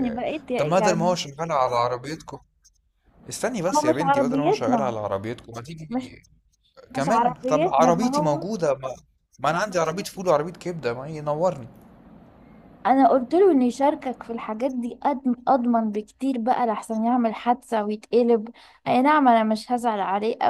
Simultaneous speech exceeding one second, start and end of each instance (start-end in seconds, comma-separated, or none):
3.7-5.0, 7.0-8.4